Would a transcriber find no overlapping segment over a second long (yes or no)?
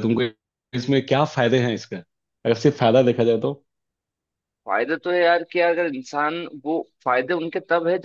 yes